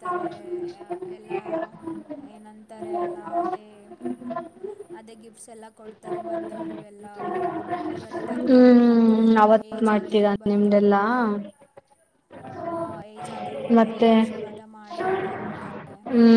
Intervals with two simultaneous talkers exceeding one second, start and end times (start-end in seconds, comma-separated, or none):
8.5-10.9